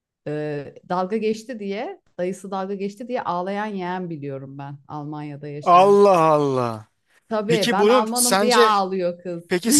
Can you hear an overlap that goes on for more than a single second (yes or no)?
yes